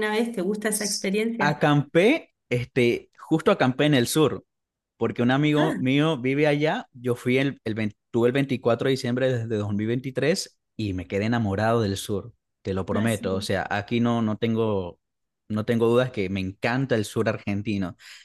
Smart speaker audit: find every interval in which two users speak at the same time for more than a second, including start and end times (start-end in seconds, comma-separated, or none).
none